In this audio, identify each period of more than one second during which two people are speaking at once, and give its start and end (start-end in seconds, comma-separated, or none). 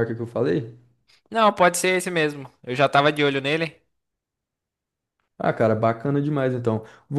none